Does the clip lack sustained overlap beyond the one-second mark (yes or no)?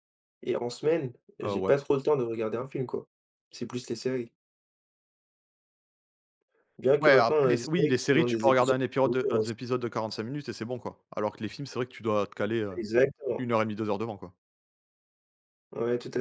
no